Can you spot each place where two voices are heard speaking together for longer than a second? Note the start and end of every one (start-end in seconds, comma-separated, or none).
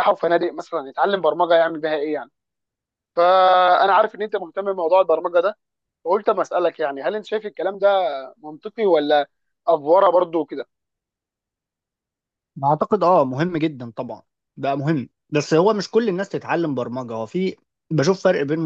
none